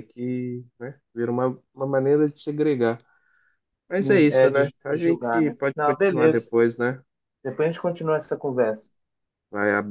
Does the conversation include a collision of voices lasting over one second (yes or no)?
yes